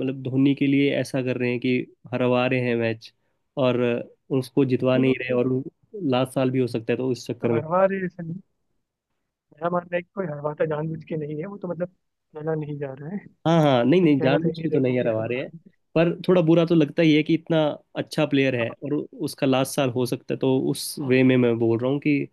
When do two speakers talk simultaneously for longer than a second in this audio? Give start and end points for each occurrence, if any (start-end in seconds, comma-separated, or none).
13.7-15.5